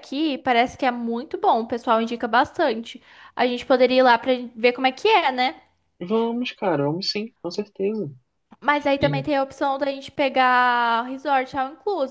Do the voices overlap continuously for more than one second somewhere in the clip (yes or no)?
no